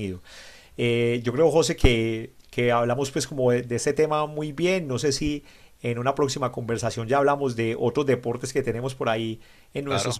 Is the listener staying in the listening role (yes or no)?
yes